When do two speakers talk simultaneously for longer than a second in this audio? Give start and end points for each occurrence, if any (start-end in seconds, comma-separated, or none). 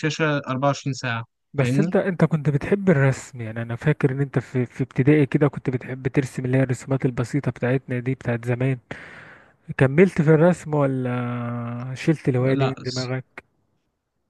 none